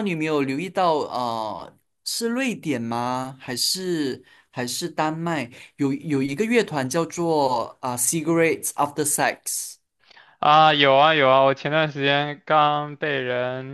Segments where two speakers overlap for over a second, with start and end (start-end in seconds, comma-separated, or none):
none